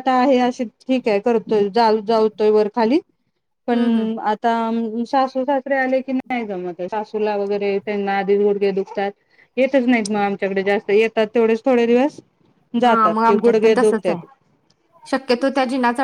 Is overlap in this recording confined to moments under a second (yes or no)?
no